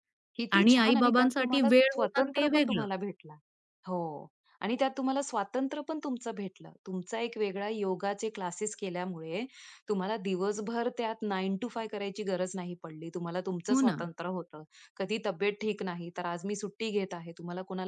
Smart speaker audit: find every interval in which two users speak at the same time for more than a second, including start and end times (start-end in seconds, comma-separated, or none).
0.6-2.9